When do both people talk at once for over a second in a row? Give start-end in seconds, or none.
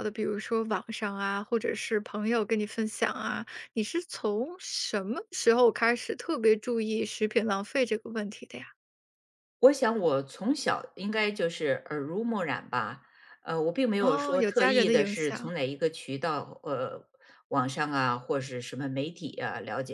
14.0-15.5